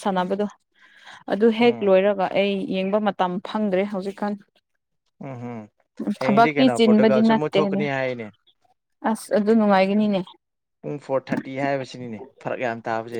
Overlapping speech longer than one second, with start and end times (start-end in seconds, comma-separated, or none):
6.2-7.8